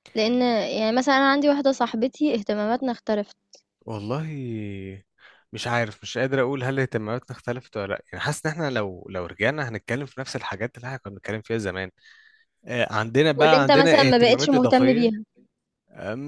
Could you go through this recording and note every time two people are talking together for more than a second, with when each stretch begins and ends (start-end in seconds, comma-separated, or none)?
13.4-15.1